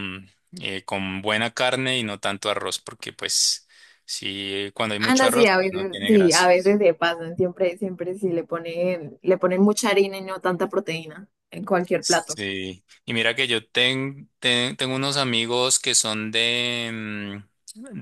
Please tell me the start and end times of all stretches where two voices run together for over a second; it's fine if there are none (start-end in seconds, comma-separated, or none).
5.0-6.5